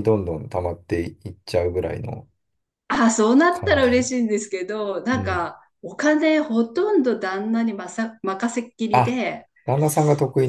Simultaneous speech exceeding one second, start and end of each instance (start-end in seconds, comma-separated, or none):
none